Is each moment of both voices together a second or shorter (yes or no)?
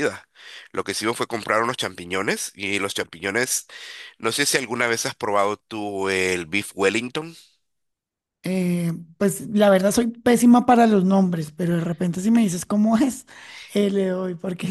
yes